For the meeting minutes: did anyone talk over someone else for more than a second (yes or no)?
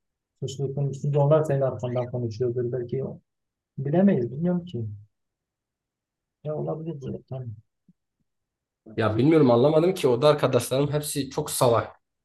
no